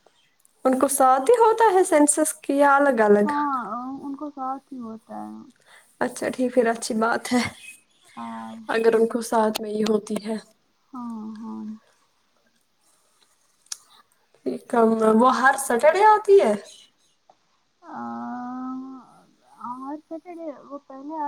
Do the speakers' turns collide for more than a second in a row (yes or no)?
no